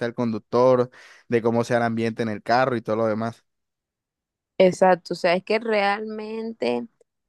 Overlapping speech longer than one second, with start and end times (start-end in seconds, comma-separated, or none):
none